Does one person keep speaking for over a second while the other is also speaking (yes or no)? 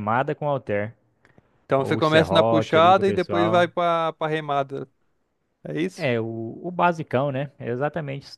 yes